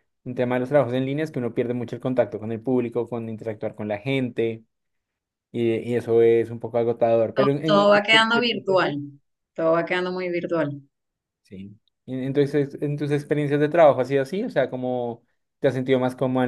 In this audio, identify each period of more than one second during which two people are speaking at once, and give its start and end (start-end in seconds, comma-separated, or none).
7.3-8.9